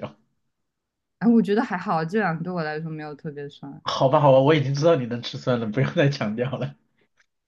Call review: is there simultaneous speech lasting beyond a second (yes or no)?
no